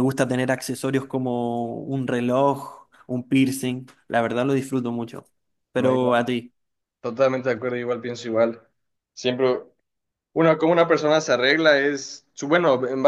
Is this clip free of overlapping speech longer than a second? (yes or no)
yes